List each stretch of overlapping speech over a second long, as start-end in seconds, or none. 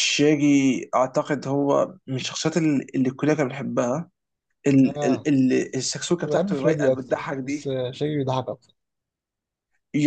6.2-7.7